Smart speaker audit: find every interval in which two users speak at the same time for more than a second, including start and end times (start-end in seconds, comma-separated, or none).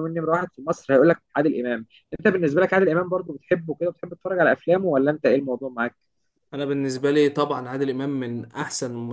none